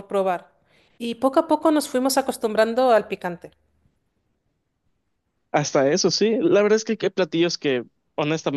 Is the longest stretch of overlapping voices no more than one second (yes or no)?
yes